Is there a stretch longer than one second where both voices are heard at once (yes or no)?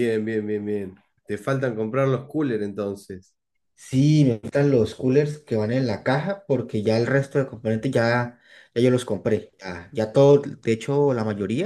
no